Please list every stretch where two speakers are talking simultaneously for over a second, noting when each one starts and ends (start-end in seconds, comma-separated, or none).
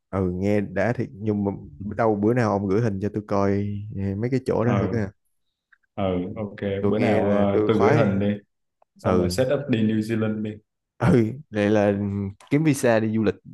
6.8-8.2